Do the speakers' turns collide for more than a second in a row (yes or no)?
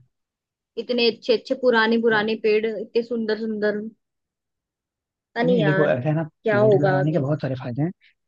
yes